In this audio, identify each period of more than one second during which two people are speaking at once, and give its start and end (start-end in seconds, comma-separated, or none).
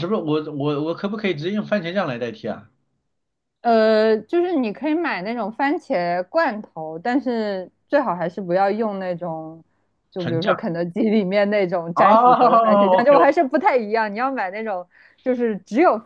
11.9-13.3